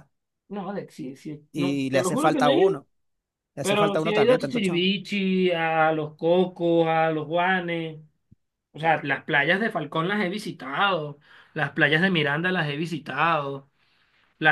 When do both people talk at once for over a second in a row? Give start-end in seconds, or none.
1.5-2.8, 3.6-4.9